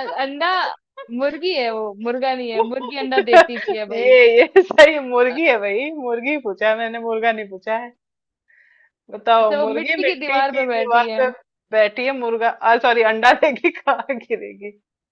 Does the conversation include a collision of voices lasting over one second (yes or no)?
yes